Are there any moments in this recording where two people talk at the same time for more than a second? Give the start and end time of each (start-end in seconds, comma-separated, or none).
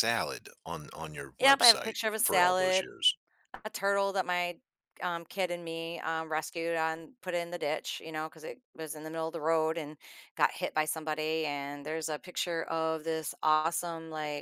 1.4-2.9